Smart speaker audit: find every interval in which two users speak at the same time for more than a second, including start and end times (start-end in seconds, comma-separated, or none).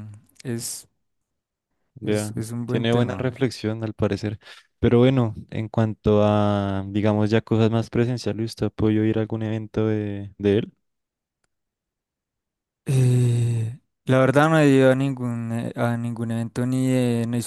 2.0-3.4